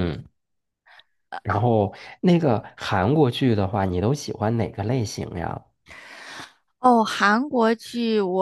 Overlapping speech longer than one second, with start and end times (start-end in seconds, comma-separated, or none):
none